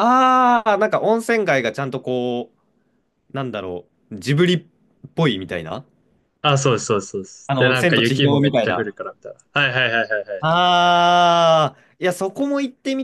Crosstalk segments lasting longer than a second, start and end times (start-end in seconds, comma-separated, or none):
7.5-8.9